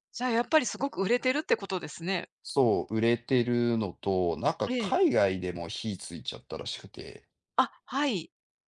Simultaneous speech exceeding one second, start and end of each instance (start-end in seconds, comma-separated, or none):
none